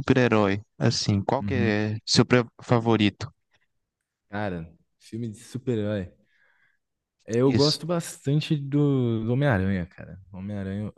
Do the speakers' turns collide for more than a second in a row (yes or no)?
no